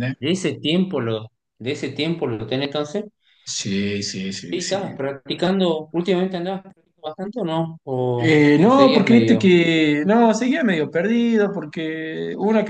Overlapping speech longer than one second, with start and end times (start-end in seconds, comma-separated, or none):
8.2-9.5